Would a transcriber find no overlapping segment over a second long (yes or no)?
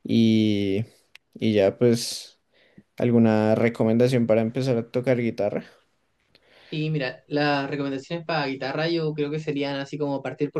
yes